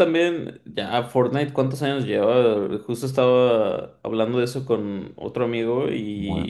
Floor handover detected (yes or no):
no